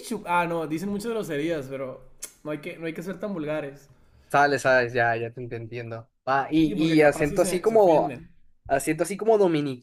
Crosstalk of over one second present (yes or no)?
yes